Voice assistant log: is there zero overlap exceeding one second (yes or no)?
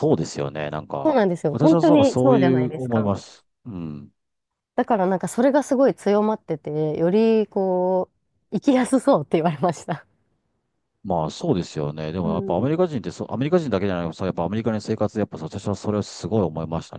no